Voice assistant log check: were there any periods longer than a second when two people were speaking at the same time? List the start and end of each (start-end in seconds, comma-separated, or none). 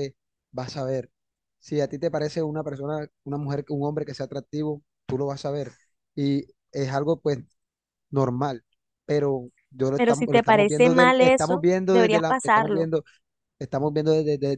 10.0-12.9